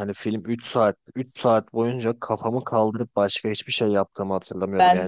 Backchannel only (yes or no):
yes